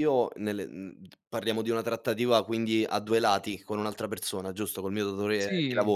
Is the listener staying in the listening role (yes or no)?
no